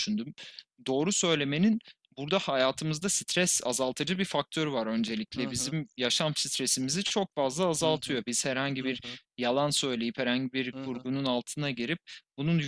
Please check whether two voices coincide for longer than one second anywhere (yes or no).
no